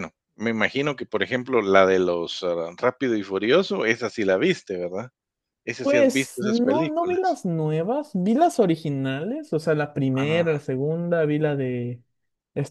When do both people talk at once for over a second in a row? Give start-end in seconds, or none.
5.8-7.4